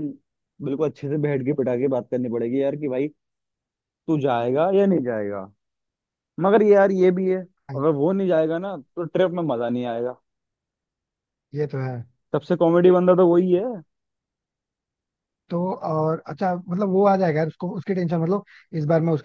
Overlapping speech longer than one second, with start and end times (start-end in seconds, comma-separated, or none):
none